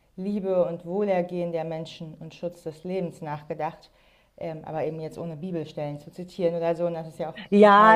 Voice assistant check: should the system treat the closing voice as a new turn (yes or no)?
yes